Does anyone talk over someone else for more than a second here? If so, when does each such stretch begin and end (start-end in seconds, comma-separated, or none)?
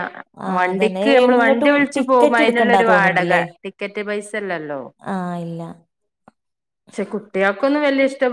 0.6-3.4